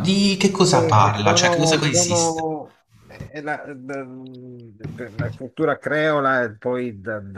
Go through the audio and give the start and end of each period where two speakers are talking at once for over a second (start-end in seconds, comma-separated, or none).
0.7-2.5